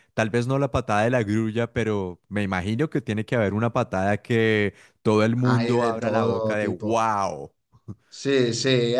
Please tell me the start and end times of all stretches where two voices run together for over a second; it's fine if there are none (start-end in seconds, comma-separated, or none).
5.4-7.0